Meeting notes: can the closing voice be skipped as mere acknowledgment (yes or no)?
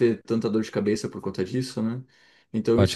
yes